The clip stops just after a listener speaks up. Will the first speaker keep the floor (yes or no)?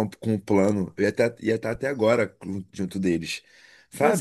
no